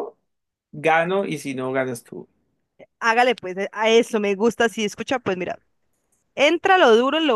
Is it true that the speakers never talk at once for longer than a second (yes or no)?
yes